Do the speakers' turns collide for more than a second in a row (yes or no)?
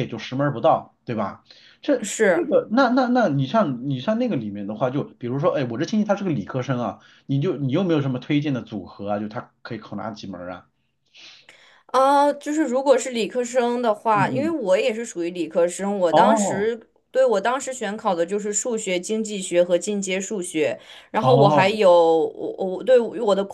no